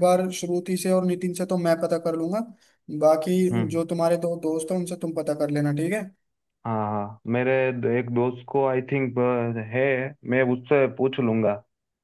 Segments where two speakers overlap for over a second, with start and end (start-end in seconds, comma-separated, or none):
none